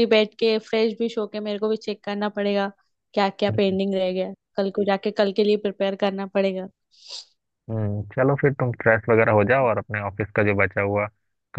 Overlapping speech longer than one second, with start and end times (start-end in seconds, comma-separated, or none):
none